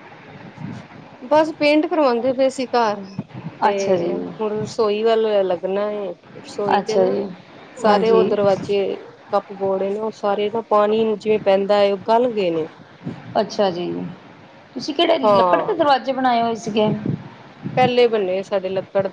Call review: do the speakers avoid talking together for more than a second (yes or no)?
yes